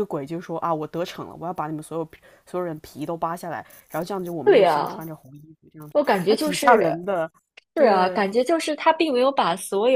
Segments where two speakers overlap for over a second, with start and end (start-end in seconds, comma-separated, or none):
none